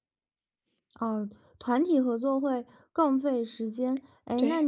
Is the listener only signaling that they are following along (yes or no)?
yes